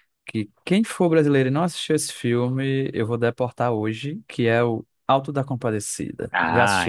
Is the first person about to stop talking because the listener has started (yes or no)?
yes